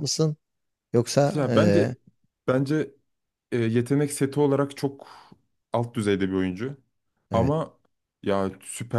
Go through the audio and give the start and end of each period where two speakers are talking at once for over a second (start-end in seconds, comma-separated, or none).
none